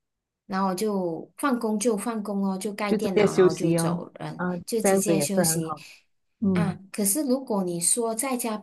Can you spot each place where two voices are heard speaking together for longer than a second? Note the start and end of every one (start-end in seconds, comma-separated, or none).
2.9-5.7